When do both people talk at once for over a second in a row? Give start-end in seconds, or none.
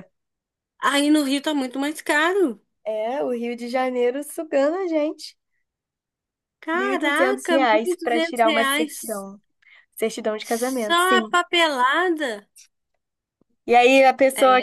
6.7-9.2